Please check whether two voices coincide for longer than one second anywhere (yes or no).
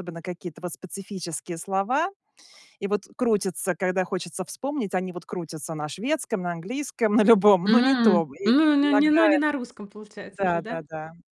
yes